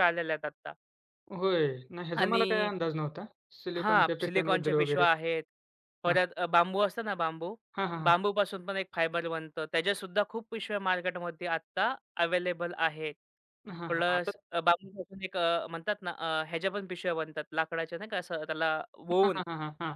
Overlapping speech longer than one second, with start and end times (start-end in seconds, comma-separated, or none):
3.8-5.0